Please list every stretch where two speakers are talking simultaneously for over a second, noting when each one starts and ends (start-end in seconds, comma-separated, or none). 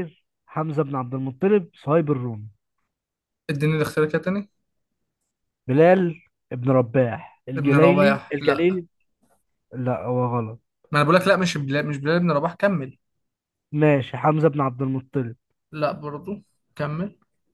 7.5-8.8